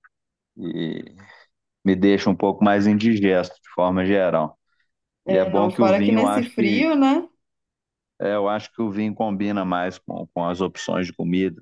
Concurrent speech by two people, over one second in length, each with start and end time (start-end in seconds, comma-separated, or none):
5.3-6.8